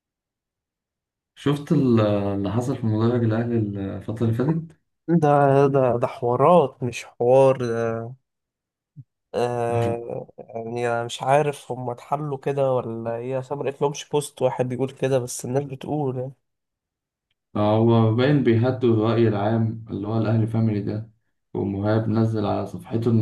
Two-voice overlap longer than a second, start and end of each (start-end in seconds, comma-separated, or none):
none